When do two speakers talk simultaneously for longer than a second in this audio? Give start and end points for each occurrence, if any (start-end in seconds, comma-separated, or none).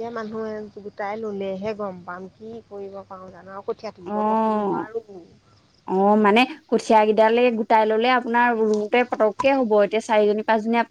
none